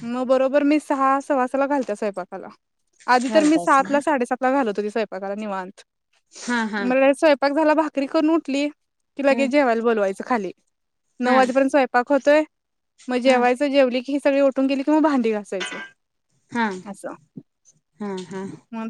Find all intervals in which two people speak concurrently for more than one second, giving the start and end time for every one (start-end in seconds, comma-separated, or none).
none